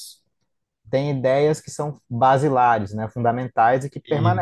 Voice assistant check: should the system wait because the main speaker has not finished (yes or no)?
yes